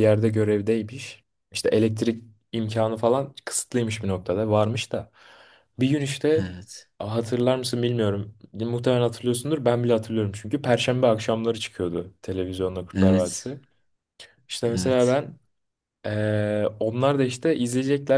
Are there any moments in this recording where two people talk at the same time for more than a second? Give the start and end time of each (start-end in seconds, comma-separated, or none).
none